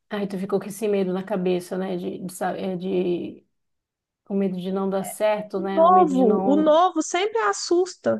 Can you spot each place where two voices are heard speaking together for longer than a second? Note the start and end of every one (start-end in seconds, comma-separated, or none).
5.5-6.8